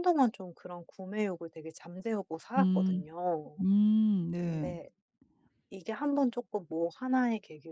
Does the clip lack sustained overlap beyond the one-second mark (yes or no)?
yes